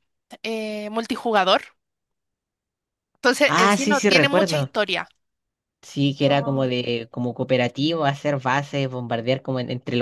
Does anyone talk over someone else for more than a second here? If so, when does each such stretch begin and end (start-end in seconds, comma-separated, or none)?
3.5-4.7